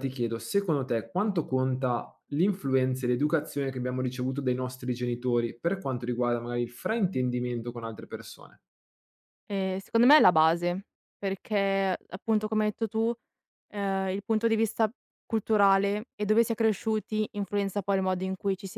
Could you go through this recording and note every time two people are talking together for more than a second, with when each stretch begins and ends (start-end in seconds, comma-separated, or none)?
none